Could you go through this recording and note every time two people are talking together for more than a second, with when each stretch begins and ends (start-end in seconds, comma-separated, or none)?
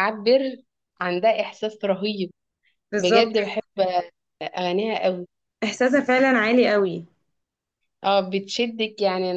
none